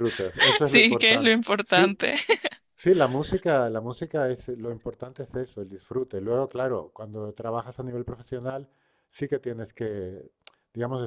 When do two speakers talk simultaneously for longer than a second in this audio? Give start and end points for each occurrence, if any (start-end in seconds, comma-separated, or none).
0.6-1.9